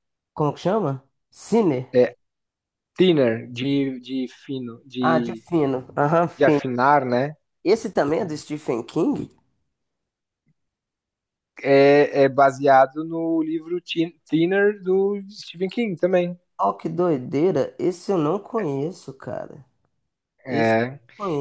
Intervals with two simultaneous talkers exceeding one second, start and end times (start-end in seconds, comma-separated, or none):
none